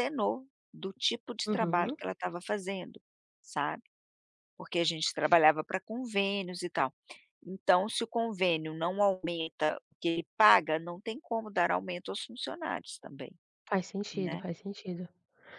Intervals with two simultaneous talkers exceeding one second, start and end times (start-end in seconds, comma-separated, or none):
none